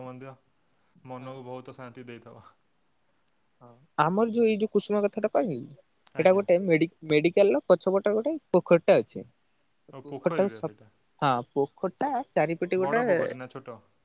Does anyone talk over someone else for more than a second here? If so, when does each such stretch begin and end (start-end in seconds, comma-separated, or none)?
none